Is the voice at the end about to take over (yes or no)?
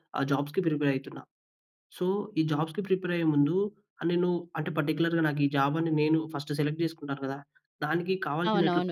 yes